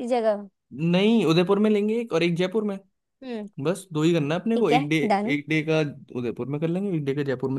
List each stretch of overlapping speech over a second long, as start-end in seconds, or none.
none